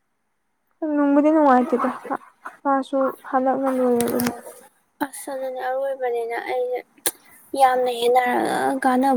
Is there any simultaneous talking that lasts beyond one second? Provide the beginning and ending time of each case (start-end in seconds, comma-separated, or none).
none